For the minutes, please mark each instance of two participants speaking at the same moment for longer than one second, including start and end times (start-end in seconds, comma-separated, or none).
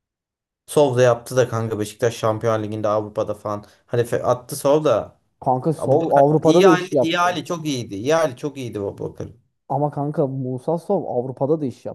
5.8-7.4